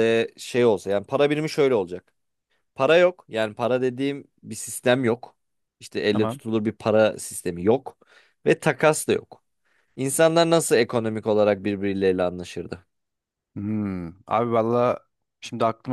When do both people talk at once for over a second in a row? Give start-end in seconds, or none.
none